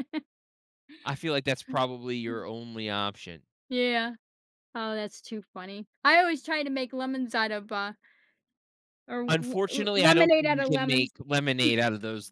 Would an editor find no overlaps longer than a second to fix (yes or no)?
no